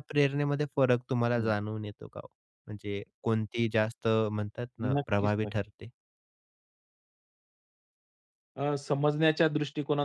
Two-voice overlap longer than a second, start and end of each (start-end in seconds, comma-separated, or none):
none